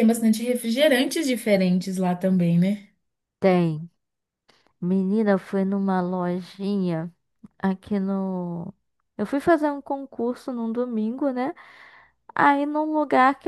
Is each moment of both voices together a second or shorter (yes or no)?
yes